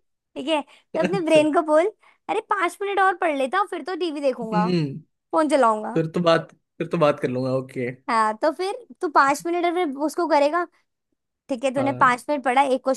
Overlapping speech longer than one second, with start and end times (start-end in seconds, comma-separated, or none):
none